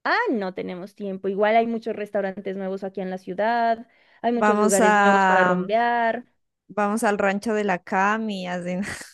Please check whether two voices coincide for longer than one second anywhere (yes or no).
yes